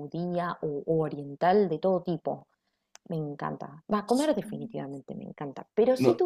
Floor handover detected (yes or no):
no